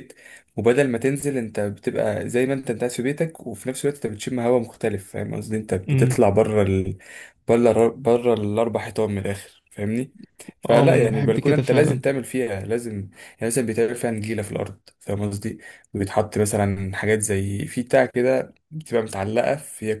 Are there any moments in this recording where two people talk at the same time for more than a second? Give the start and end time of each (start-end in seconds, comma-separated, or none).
10.7-12.0